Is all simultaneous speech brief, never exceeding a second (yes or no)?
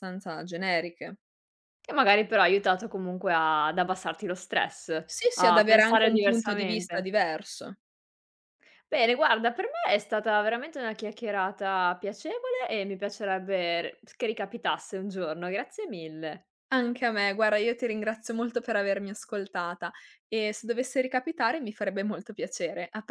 no